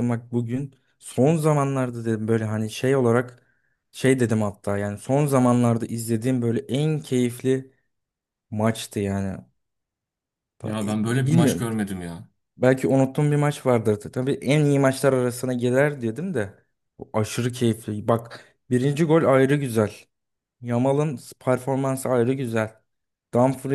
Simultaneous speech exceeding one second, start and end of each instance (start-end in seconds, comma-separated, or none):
none